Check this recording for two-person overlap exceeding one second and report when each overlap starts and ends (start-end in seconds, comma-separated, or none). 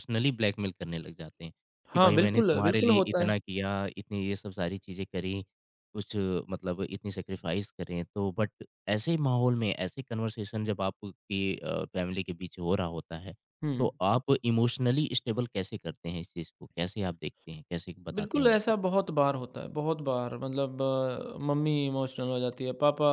1.9-3.3